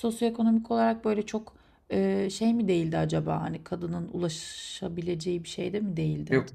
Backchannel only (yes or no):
no